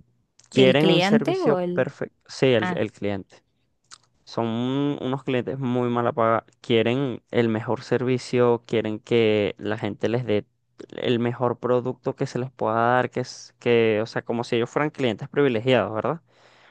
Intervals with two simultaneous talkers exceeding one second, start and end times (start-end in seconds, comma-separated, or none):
0.5-1.9